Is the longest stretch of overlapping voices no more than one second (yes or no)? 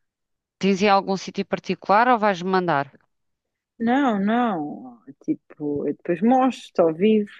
yes